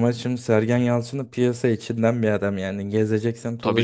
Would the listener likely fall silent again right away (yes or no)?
no